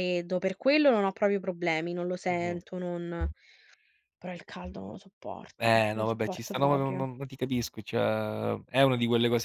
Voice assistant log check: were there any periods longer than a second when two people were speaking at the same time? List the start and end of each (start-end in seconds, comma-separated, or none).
5.6-7.0